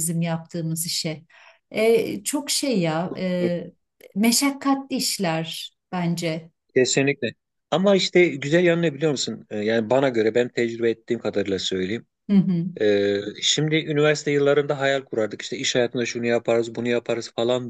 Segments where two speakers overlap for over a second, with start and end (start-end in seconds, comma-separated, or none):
none